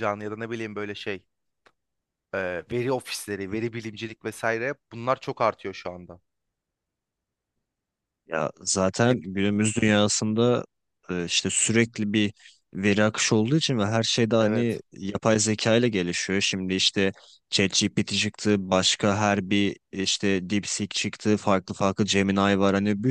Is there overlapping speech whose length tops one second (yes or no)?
no